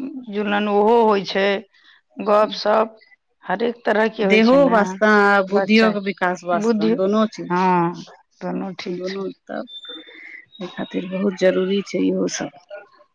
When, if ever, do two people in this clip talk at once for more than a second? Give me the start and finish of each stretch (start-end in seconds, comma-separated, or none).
5.6-6.9